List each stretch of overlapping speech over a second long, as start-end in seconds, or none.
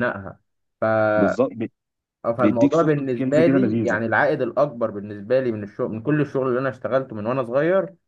2.4-4.0